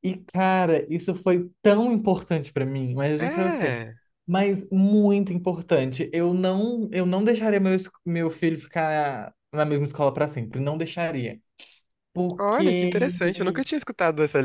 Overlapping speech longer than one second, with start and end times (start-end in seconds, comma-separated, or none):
12.4-13.6